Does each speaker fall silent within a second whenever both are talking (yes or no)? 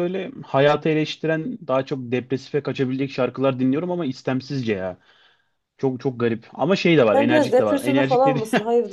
no